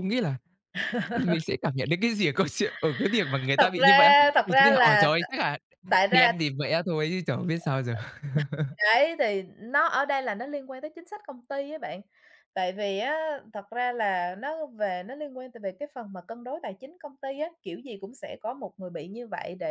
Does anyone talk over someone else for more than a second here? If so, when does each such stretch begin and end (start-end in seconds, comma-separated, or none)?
3.6-5.2